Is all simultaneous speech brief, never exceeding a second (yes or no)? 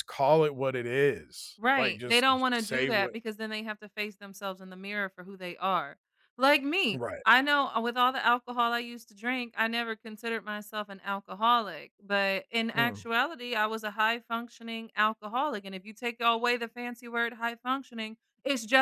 no